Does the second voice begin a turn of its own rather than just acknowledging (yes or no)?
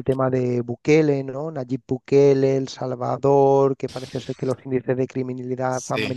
no